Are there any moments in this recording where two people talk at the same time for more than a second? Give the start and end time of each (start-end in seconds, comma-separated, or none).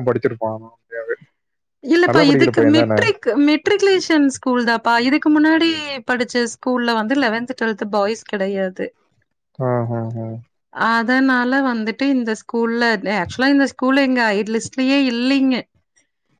none